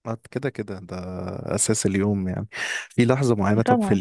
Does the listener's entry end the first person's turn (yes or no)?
no